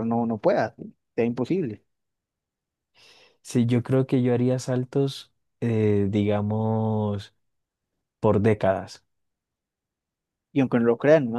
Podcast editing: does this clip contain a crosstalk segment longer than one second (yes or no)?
no